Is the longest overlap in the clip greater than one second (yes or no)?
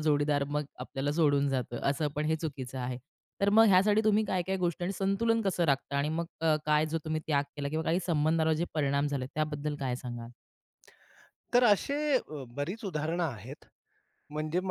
no